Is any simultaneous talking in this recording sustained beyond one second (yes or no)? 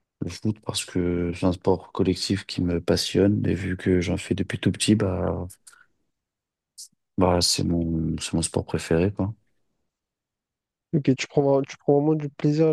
no